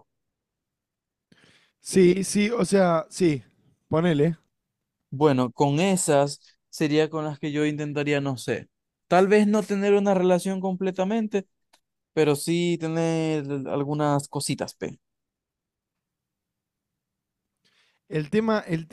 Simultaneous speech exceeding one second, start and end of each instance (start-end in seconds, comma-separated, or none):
none